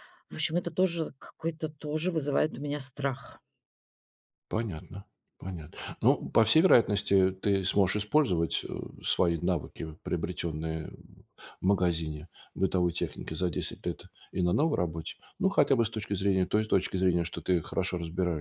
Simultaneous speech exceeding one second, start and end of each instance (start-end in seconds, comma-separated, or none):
none